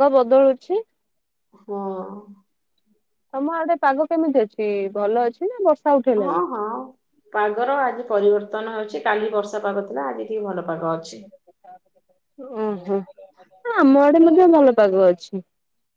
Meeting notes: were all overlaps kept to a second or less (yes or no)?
yes